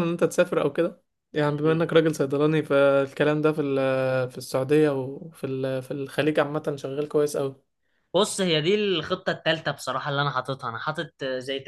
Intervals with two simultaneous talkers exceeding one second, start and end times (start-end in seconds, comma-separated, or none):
none